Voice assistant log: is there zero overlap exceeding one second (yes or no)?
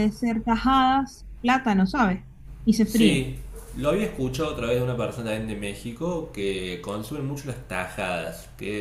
yes